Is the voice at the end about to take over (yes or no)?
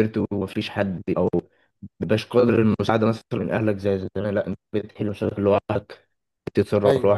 yes